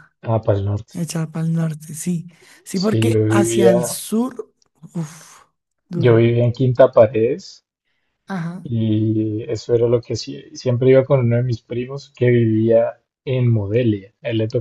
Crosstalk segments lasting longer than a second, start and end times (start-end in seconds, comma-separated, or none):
2.7-4.0